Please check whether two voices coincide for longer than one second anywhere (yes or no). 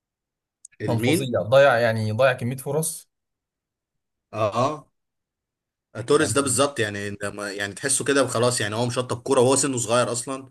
no